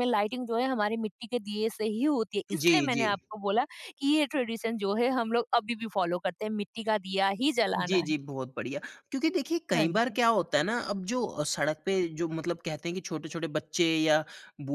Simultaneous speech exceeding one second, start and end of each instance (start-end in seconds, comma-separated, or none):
none